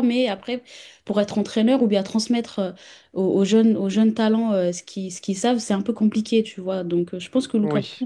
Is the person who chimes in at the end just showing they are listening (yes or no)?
yes